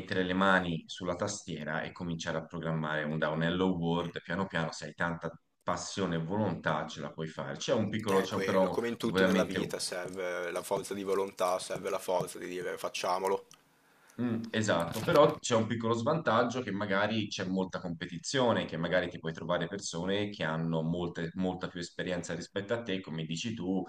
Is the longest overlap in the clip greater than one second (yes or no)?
yes